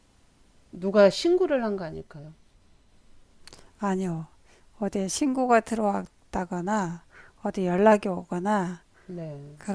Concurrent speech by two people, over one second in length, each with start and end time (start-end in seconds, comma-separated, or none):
none